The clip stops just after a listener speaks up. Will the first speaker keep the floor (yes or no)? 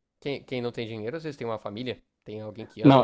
no